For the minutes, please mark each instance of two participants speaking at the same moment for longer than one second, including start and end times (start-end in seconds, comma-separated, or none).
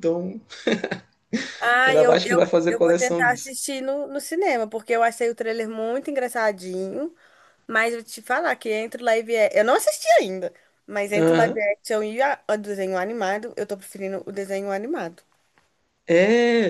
1.9-3.6